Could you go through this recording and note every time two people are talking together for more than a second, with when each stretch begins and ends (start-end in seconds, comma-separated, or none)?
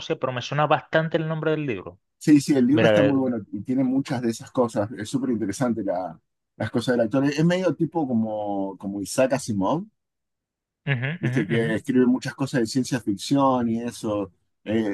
none